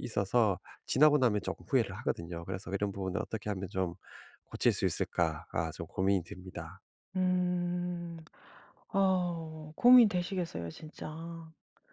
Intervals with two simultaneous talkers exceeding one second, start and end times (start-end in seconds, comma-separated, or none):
none